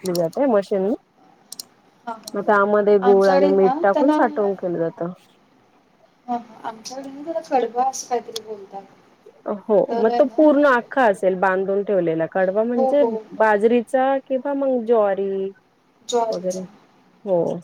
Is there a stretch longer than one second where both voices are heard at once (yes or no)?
yes